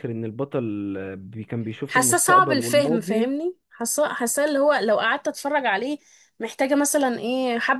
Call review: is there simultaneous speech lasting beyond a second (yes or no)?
yes